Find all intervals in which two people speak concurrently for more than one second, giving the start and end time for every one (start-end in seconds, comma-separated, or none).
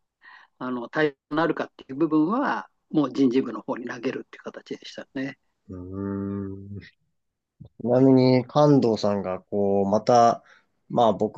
none